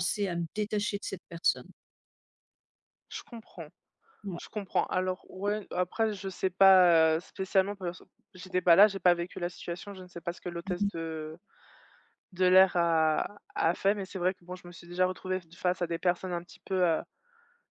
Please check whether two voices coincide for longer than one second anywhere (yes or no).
no